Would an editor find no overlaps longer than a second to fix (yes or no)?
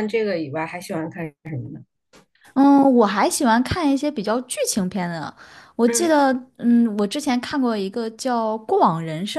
yes